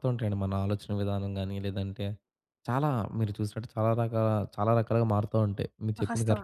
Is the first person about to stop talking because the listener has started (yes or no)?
yes